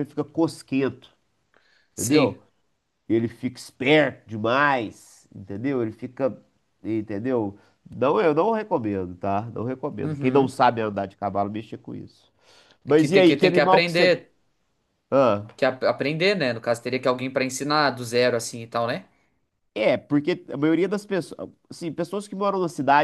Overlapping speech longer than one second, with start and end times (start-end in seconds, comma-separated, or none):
12.9-14.2